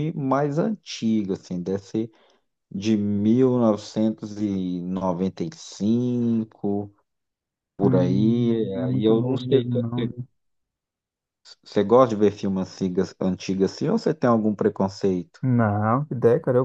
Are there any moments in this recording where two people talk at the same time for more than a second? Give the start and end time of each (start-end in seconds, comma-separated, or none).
7.8-10.1